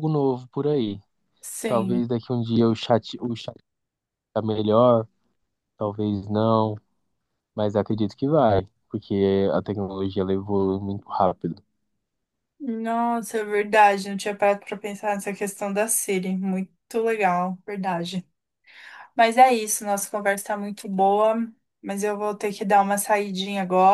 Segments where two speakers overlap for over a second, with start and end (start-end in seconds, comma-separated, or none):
none